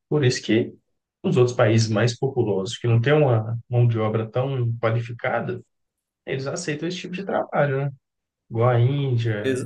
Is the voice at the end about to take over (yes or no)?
no